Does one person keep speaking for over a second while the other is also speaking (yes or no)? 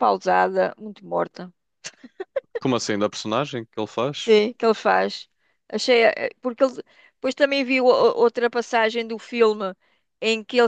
no